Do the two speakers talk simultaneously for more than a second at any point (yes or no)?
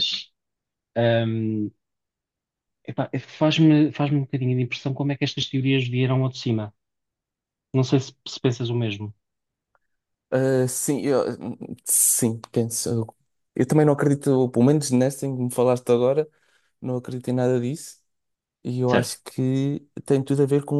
no